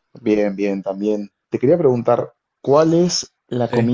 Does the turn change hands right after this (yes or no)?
no